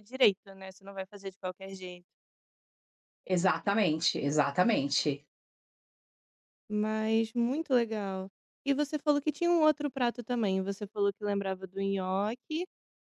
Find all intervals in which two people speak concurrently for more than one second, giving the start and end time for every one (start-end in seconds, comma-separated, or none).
none